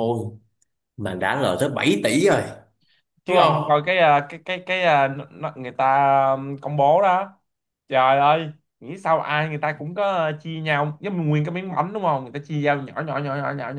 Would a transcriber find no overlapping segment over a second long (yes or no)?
yes